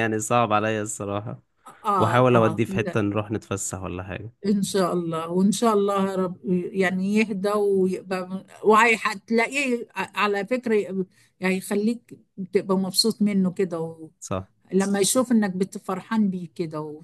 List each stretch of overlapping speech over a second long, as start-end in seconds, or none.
none